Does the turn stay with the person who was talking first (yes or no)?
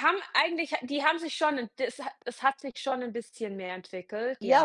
no